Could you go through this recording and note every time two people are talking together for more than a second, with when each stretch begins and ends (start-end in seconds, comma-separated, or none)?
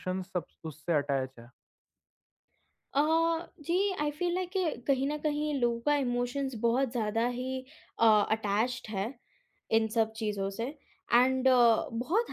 none